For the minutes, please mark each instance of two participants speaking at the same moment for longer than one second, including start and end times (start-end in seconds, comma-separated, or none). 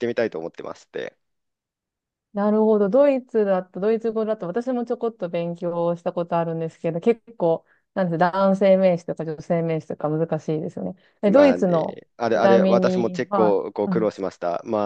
11.2-14.1